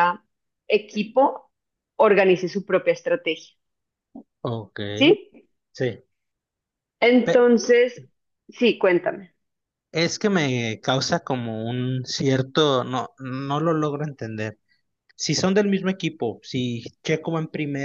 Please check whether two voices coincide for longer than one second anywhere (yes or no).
no